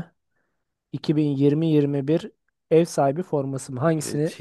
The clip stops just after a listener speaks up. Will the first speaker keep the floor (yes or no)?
no